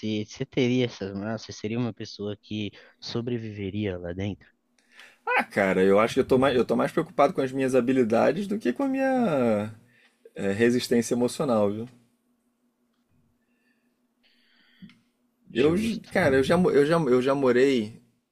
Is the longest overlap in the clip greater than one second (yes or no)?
no